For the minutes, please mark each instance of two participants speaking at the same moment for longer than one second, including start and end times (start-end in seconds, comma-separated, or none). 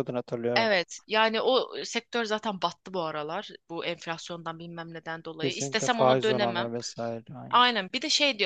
5.4-6.7